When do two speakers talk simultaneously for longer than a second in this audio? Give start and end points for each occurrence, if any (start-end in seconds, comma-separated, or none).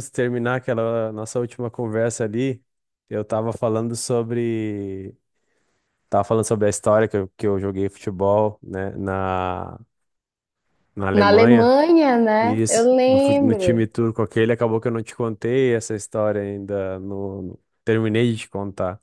12.4-13.8